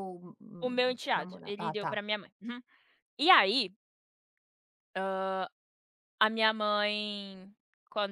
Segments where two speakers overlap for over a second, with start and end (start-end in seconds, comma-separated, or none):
0.6-2.0